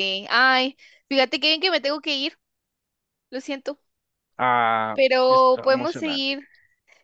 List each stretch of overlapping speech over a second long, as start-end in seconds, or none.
4.9-6.4